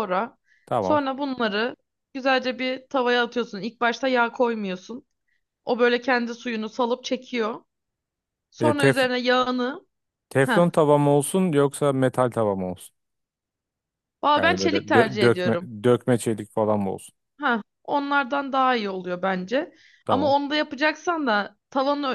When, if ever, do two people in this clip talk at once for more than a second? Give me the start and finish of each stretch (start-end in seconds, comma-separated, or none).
14.4-15.7